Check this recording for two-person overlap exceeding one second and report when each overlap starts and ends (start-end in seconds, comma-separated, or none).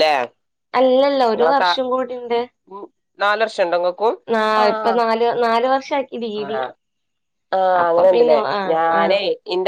none